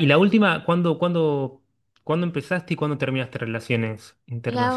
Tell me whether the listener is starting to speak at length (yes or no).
yes